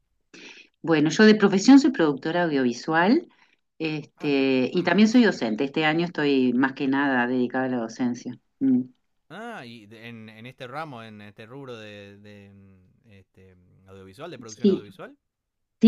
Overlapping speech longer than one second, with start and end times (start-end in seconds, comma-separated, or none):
4.2-5.6